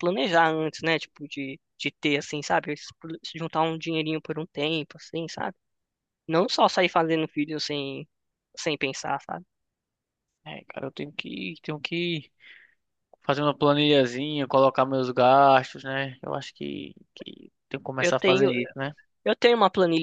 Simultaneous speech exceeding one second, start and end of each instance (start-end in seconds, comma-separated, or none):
none